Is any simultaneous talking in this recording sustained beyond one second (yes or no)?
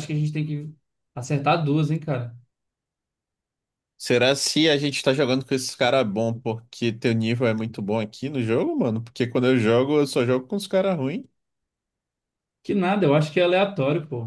no